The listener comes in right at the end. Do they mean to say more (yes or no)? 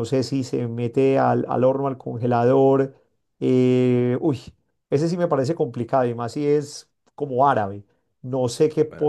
no